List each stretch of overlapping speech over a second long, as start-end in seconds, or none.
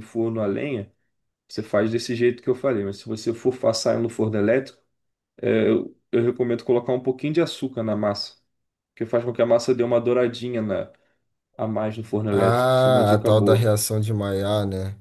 12.3-13.7